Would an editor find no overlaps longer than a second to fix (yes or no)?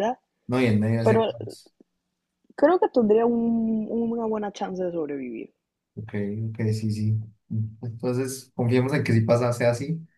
yes